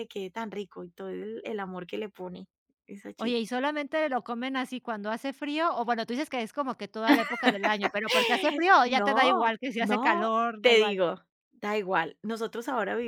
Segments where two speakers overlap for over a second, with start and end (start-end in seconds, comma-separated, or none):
8.8-11.0